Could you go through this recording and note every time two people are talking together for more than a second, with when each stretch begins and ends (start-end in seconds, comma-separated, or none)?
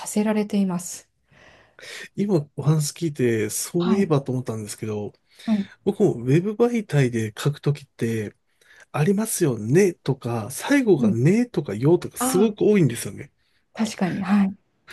none